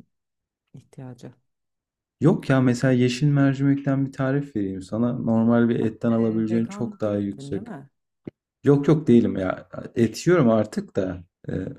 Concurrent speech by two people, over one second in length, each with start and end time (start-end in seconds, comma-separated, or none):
6.1-7.7